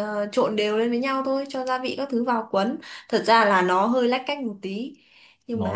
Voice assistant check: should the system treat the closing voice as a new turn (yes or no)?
yes